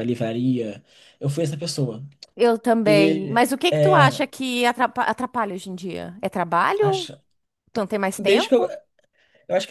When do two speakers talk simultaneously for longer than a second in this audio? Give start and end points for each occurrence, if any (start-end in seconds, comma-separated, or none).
2.9-4.2